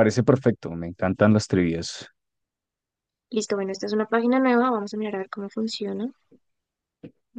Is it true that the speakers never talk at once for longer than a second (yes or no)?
yes